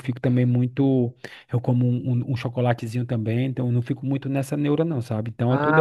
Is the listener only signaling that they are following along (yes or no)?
no